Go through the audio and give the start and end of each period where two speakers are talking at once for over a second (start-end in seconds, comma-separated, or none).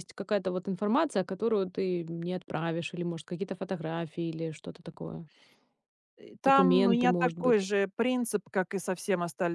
6.4-7.6